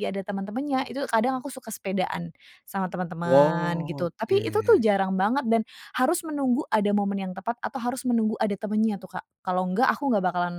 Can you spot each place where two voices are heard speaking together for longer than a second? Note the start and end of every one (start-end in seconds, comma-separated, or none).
3.2-4.8